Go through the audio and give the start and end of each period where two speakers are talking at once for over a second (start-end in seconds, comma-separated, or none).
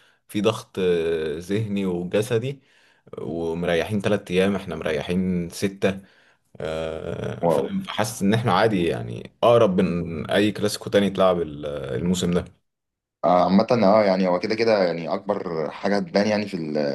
none